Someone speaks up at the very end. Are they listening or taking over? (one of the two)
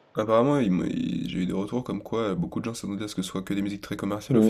taking over